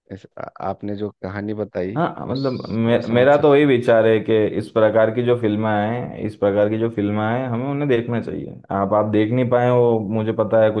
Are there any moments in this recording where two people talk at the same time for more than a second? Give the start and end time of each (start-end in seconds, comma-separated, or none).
2.0-3.8